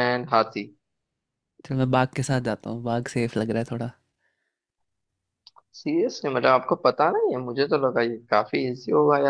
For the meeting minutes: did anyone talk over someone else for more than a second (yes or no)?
no